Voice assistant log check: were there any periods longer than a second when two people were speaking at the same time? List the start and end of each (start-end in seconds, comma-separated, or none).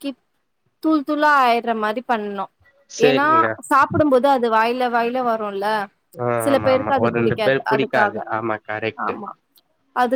6.4-8.2